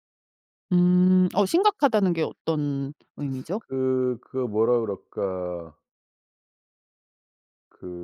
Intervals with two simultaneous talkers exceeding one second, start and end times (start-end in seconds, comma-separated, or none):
none